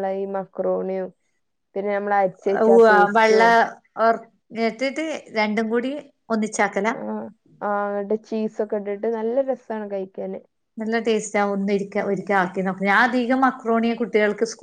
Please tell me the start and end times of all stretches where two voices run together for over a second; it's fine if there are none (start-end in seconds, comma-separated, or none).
none